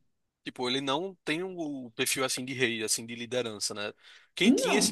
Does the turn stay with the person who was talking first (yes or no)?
yes